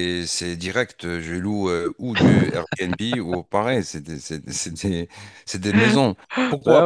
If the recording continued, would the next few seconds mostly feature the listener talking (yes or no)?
no